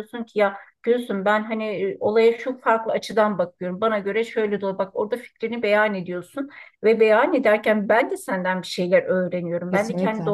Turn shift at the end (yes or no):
no